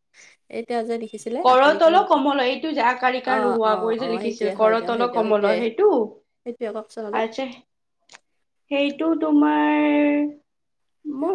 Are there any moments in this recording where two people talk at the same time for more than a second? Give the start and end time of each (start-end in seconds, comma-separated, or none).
3.4-5.5